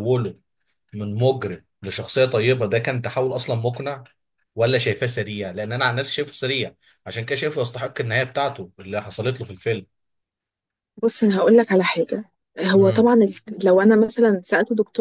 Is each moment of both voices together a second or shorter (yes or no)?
yes